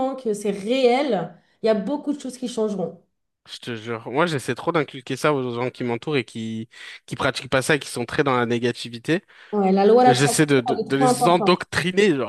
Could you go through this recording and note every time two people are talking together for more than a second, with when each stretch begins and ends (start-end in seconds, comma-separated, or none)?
10.1-11.5